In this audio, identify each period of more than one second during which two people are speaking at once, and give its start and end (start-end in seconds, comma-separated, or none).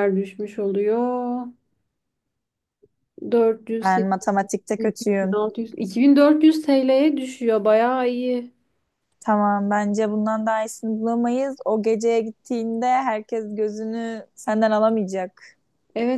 3.8-5.4